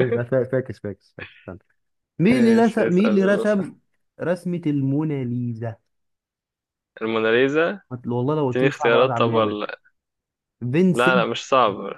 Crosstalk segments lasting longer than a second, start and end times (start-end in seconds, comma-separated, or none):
2.3-3.8, 8.5-9.7